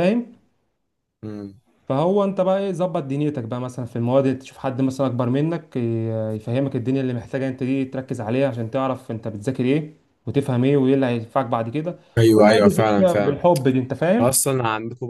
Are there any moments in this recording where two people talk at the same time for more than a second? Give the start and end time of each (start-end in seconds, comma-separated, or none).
12.2-13.4